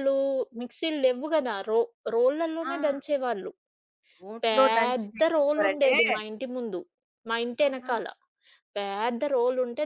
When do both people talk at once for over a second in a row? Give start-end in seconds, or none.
4.4-5.9